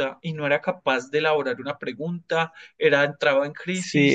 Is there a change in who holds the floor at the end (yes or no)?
yes